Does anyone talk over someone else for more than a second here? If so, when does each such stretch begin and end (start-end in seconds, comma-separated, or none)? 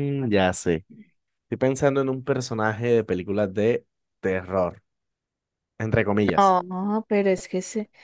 none